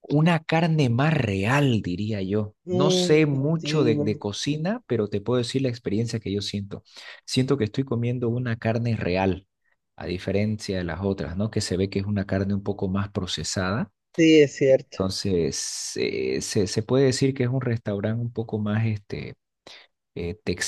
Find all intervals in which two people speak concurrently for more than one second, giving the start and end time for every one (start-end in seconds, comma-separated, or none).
2.6-4.1